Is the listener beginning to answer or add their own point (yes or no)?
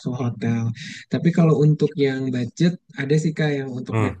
no